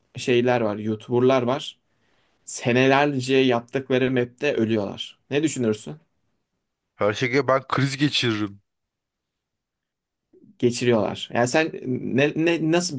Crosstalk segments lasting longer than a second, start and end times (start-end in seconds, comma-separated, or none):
none